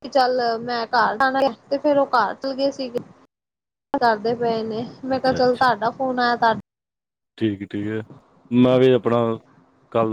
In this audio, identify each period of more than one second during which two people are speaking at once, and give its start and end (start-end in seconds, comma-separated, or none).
none